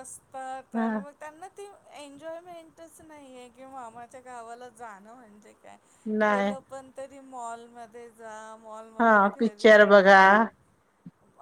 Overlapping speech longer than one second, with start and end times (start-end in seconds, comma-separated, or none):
9.0-10.3